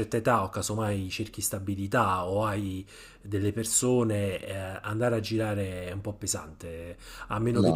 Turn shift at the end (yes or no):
no